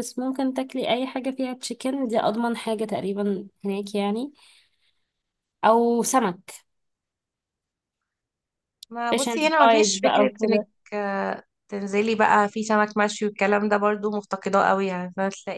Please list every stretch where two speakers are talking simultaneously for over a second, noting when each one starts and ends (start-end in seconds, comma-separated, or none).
9.1-10.7